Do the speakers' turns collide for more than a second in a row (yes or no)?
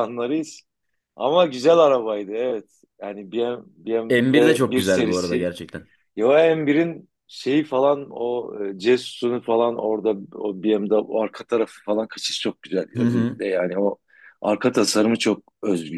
yes